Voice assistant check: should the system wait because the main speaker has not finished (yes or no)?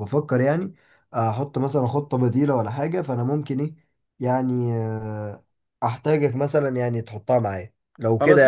no